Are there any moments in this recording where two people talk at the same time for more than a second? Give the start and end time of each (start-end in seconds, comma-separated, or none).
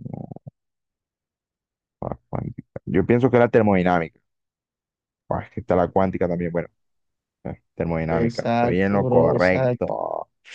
8.1-9.9